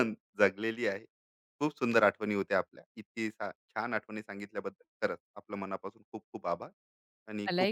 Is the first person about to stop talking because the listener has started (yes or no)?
yes